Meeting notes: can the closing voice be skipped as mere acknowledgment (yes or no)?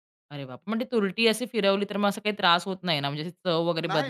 no